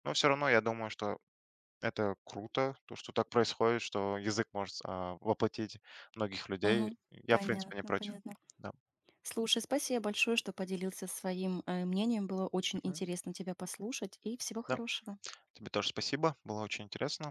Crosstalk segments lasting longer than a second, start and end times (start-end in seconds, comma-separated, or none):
6.6-8.2